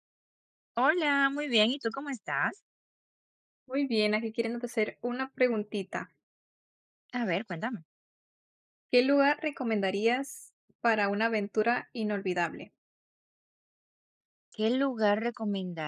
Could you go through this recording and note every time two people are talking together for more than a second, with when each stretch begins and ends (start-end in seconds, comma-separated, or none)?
none